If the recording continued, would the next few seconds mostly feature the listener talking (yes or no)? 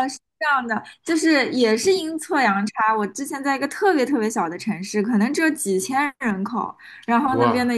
no